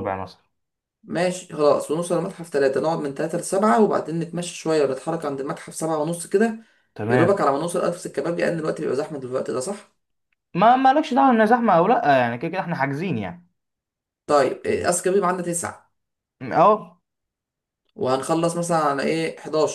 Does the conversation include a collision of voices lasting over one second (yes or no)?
no